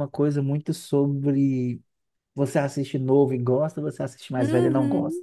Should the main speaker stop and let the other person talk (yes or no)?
yes